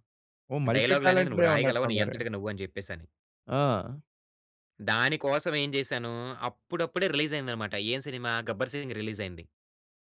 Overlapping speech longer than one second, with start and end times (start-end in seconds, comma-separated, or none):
0.7-2.2